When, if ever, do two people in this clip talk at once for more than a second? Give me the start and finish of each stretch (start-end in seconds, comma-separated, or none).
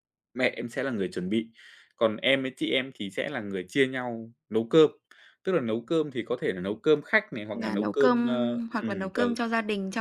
7.5-9.2